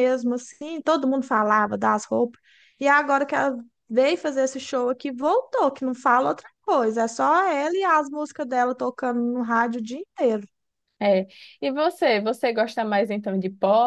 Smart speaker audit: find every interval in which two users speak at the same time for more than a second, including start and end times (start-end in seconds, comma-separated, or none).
none